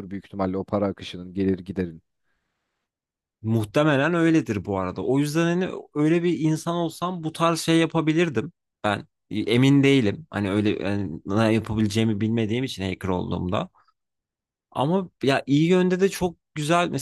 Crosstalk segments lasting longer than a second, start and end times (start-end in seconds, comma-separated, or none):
none